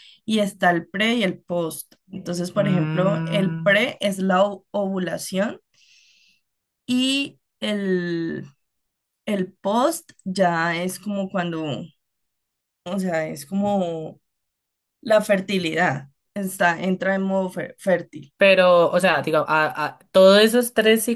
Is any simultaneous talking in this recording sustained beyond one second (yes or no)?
yes